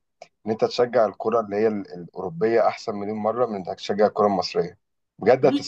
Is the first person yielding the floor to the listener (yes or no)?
yes